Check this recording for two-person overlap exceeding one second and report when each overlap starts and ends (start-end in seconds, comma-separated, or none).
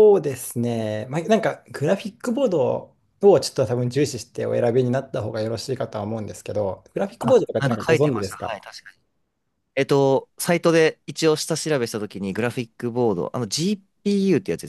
7.2-8.6